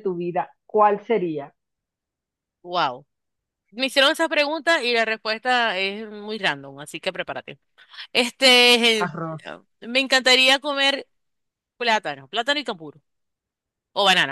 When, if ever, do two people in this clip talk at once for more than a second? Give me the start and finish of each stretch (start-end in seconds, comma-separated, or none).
none